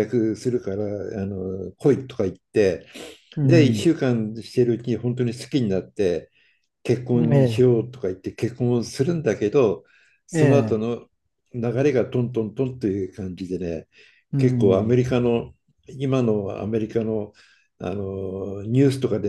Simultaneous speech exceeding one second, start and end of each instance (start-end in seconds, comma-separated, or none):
none